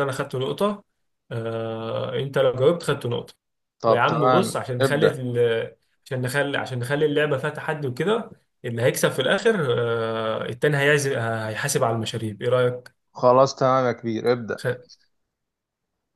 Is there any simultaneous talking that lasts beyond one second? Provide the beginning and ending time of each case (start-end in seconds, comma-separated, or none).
3.9-5.2